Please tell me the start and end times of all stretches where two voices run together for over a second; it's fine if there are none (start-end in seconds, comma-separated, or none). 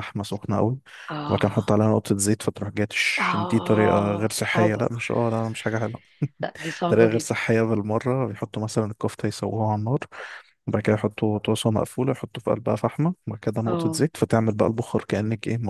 3.2-4.8